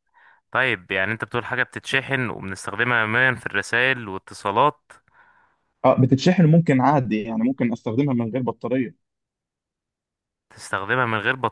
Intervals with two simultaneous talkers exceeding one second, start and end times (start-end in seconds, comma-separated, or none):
none